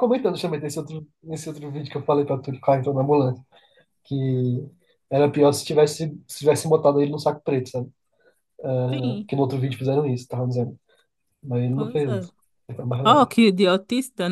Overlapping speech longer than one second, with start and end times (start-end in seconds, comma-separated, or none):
none